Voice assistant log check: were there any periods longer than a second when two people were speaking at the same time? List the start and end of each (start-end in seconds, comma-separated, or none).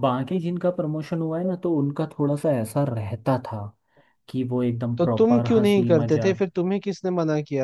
5.0-6.4